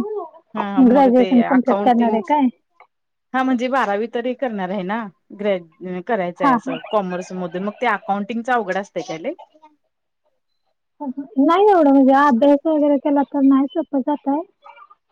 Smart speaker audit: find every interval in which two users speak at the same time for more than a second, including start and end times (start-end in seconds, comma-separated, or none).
0.6-2.2